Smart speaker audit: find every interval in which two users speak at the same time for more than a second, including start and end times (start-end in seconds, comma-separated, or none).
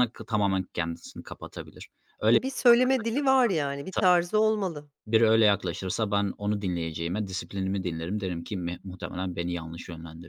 none